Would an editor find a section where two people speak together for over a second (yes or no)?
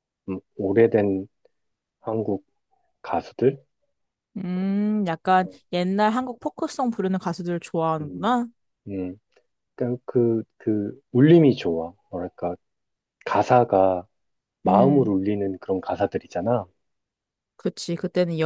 no